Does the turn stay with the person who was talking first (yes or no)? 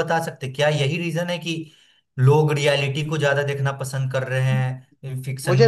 no